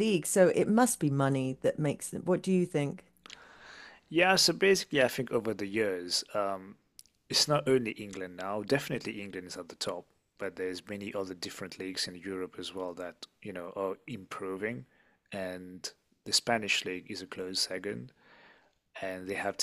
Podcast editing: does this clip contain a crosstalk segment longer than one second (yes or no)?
no